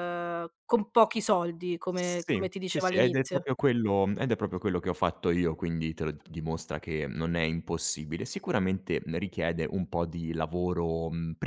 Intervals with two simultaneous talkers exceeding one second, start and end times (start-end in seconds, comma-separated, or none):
1.9-3.5